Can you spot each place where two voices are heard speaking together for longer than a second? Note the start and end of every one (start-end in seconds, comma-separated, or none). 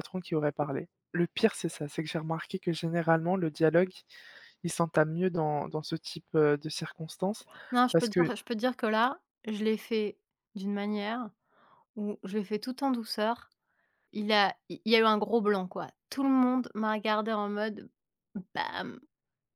none